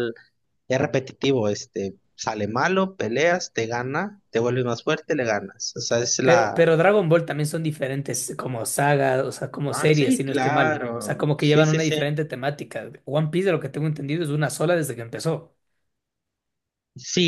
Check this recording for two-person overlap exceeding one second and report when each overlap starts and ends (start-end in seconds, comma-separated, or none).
9.7-11.9